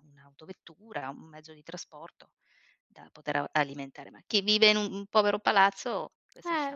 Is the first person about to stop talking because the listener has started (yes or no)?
yes